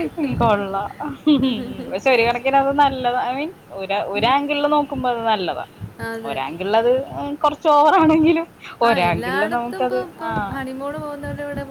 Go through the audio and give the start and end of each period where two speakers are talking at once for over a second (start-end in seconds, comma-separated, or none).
none